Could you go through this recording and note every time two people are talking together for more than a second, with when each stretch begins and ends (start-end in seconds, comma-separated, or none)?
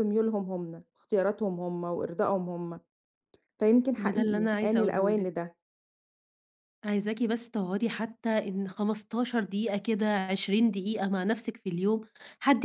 4.0-5.3